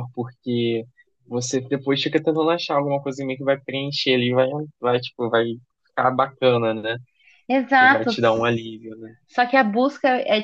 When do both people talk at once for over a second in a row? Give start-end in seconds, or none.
none